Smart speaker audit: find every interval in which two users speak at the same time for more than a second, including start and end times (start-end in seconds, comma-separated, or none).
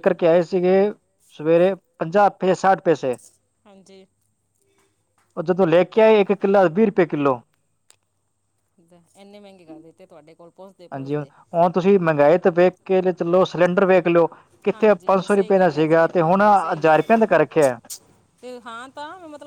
14.7-17.2